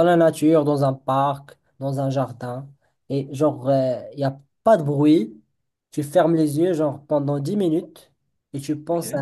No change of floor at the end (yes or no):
yes